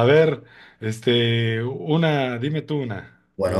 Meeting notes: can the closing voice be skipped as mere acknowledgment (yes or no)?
no